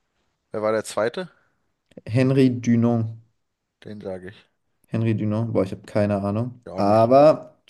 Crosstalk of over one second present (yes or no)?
no